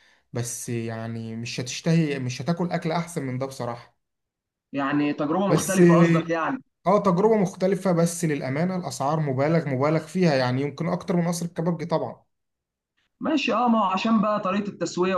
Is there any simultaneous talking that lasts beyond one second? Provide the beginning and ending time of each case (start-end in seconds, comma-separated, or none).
none